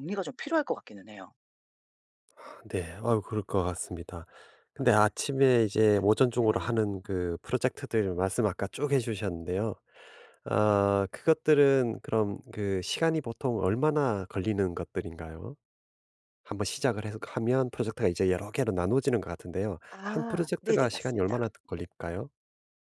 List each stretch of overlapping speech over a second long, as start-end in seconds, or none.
19.9-21.4